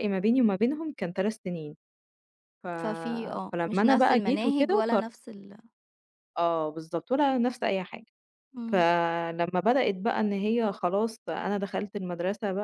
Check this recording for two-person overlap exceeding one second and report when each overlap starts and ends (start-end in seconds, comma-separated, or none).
3.5-5.0